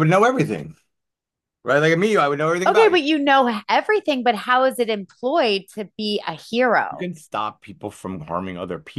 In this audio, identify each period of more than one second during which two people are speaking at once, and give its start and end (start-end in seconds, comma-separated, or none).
none